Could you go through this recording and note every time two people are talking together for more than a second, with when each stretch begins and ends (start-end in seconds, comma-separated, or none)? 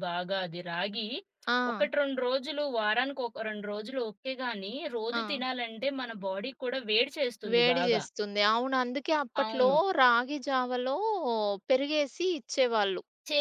none